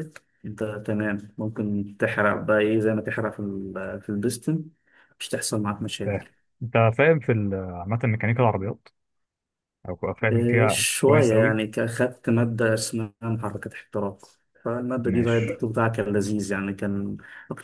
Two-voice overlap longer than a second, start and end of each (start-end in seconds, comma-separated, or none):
10.3-11.6